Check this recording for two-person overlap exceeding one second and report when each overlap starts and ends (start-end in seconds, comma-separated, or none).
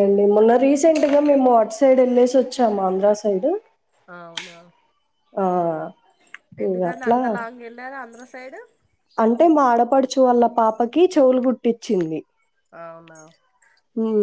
none